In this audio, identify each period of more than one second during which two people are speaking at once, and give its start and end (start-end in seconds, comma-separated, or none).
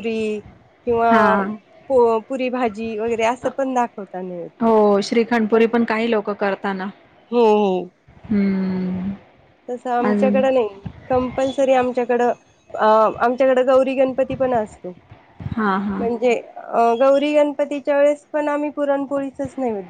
none